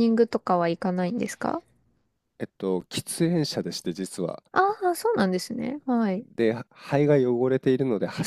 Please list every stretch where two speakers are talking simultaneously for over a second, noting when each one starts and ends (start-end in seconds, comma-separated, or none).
none